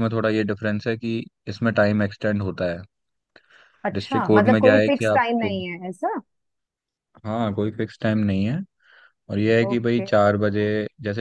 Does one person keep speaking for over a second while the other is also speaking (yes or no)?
yes